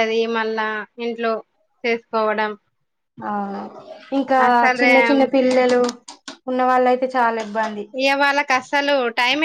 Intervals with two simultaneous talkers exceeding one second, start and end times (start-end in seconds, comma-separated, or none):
none